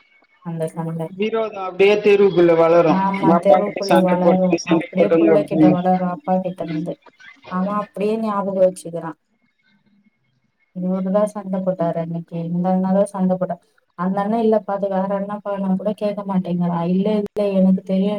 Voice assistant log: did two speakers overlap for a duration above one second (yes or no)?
yes